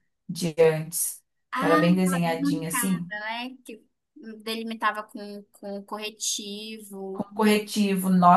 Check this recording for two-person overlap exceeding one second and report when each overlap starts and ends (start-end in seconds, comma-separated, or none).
1.6-3.1